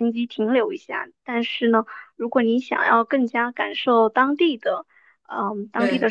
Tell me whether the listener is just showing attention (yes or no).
yes